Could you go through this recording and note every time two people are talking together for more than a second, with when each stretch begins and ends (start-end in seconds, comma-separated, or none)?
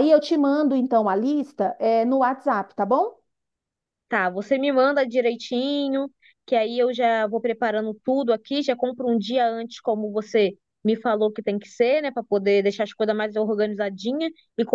none